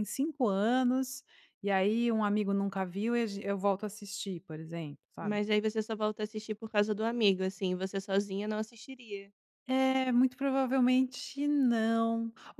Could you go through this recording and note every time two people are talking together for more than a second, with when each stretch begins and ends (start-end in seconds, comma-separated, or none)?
none